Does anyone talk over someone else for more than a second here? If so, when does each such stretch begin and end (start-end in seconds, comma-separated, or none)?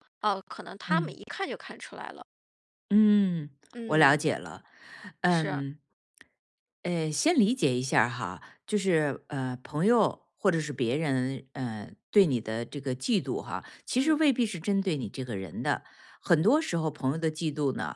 none